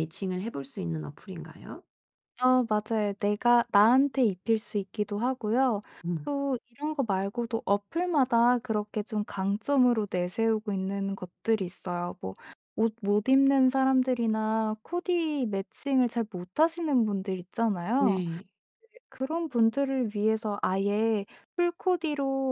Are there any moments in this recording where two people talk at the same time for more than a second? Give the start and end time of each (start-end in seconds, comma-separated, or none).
none